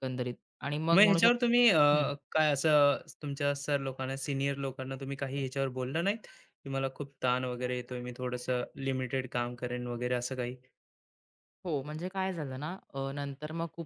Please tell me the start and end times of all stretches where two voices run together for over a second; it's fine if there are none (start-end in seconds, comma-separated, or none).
none